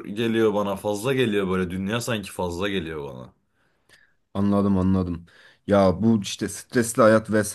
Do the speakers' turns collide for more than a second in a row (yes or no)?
no